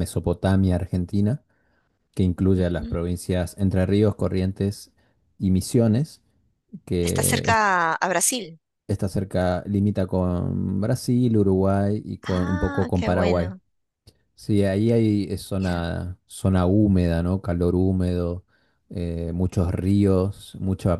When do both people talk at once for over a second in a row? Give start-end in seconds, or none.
12.2-13.5